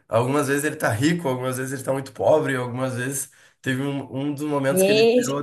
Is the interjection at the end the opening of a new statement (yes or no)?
no